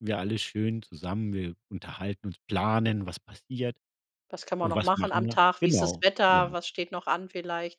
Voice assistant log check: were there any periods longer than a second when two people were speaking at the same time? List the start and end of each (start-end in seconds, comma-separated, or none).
4.6-6.5